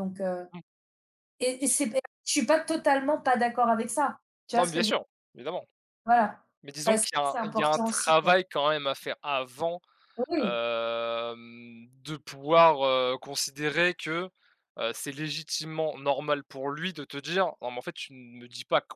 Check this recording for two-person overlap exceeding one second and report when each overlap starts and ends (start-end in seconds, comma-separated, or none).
6.8-8.4